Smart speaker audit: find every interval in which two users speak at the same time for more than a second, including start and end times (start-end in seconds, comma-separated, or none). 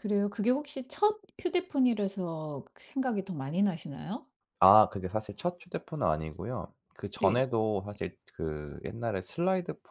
none